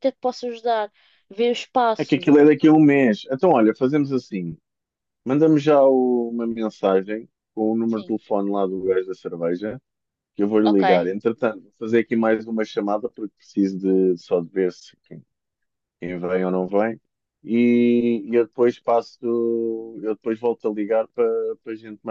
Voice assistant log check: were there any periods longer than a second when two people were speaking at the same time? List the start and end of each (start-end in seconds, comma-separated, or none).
none